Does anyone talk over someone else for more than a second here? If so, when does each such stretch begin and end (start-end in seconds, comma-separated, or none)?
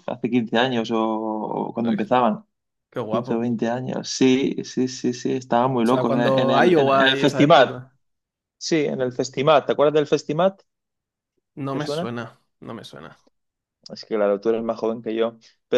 5.8-7.7